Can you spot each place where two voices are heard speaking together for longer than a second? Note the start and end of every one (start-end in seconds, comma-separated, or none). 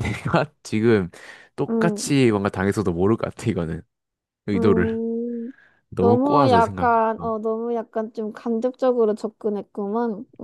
6.0-7.3